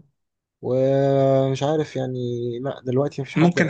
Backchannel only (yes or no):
no